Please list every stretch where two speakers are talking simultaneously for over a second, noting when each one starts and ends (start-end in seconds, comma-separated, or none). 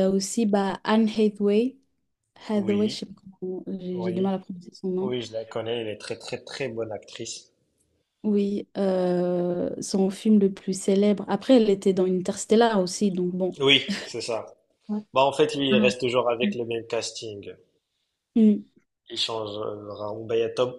none